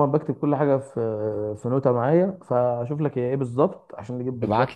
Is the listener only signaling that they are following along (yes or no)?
no